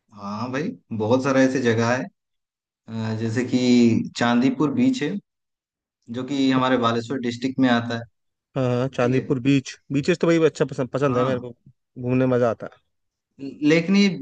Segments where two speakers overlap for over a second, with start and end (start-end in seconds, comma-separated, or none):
none